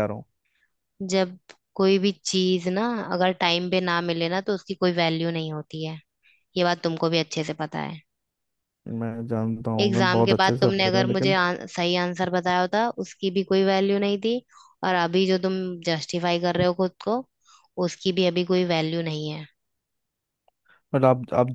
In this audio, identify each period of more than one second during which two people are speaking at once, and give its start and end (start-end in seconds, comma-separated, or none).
9.8-11.4